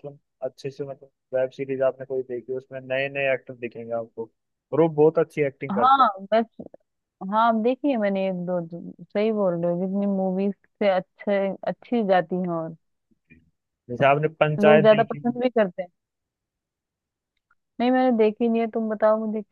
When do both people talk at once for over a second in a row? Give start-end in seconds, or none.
none